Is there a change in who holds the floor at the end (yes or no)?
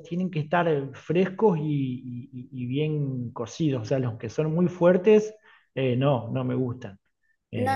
yes